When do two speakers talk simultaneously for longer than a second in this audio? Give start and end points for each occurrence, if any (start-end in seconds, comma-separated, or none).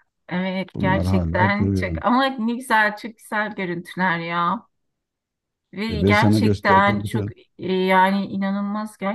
0.7-2.0, 5.9-7.3